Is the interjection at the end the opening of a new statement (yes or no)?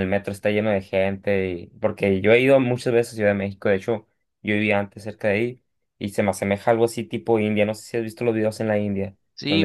yes